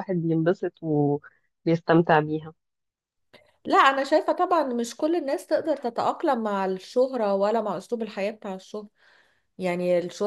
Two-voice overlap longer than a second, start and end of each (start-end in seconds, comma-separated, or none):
none